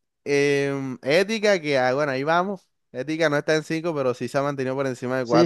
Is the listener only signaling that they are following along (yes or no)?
no